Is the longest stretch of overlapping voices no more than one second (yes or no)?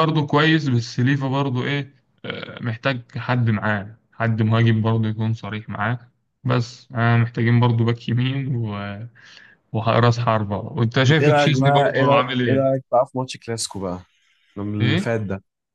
no